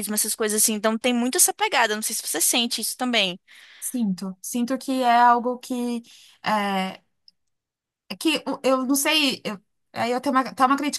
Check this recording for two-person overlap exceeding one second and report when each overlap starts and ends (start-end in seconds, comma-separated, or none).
none